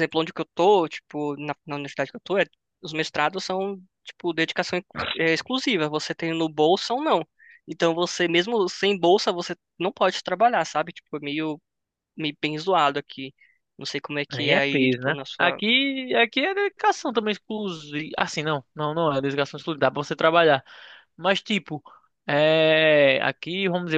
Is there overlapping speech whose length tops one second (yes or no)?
yes